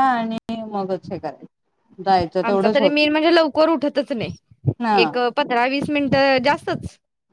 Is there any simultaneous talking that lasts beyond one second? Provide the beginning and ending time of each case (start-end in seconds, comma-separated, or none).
none